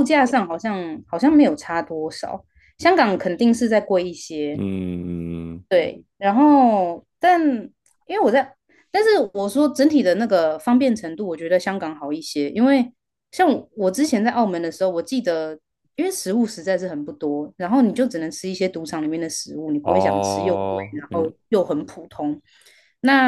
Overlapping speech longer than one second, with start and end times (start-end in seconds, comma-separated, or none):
19.8-21.3